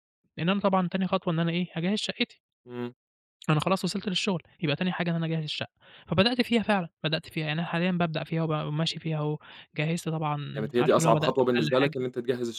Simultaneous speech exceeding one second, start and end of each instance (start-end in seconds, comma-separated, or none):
10.5-12.0